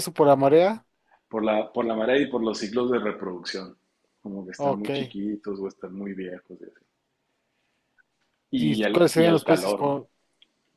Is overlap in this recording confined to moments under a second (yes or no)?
no